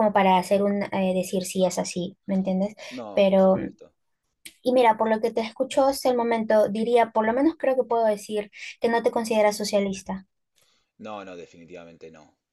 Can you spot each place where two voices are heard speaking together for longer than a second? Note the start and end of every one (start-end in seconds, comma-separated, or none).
none